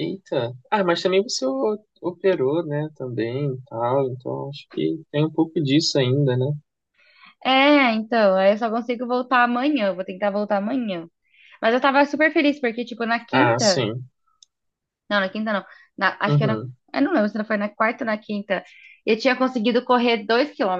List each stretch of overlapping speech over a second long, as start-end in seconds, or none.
none